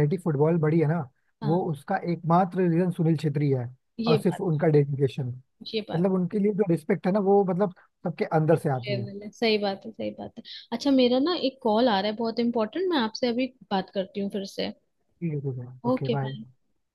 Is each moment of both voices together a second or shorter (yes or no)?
yes